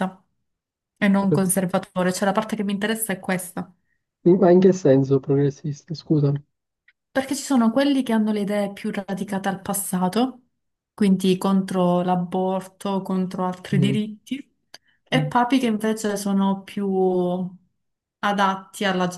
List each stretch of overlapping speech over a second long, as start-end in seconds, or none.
none